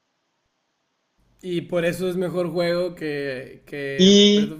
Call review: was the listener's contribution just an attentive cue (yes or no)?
no